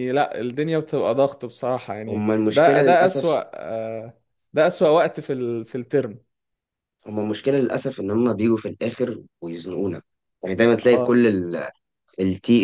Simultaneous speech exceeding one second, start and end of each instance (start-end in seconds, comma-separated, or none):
2.1-3.4